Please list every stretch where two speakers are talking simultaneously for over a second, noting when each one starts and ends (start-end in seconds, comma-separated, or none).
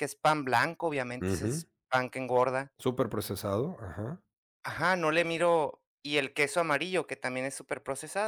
none